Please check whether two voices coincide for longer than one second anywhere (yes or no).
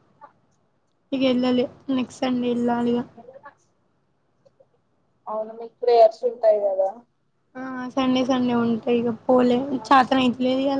no